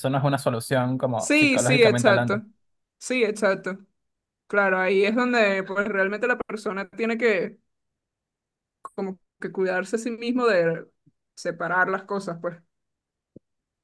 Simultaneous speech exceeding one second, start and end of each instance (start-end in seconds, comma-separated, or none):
1.2-2.4